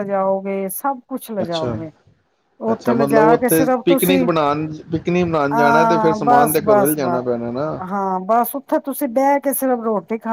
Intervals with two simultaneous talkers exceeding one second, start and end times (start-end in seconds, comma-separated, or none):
2.7-4.2, 5.5-7.1